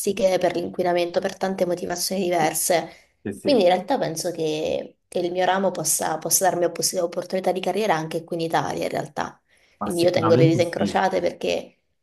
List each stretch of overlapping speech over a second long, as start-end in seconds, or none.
9.8-11.0